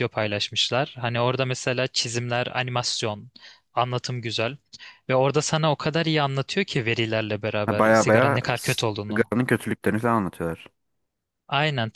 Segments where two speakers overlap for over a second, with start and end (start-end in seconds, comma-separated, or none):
7.7-9.3